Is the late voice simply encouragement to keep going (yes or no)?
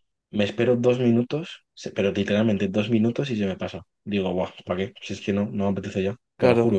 no